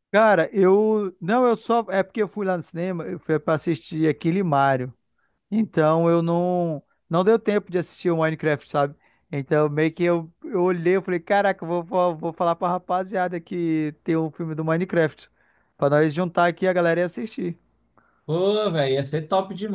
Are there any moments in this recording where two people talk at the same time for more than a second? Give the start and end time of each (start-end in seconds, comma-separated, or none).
none